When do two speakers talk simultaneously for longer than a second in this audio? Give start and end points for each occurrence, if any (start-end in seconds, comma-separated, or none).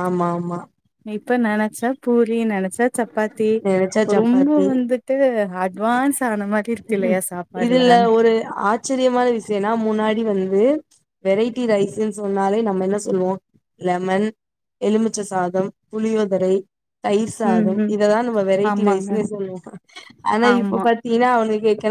none